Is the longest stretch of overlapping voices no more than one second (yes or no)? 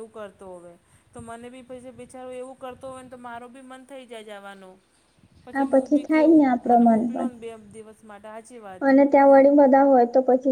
yes